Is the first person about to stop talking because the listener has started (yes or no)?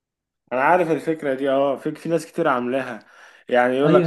no